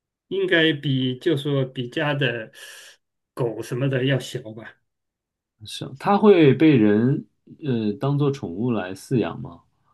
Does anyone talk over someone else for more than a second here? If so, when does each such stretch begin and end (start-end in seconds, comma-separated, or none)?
none